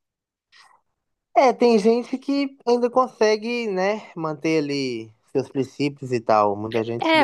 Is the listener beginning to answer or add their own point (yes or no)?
yes